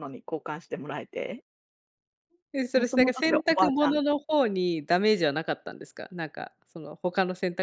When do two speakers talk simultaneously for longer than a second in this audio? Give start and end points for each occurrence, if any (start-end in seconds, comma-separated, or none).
2.7-4.0